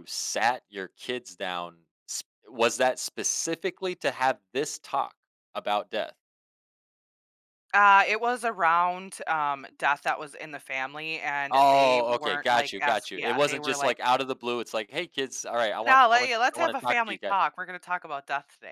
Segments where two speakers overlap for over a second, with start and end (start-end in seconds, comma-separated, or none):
11.5-14.0, 15.8-17.4